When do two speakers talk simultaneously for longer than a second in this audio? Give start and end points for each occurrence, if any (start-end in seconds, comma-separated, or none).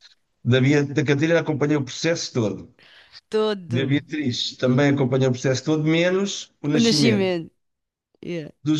none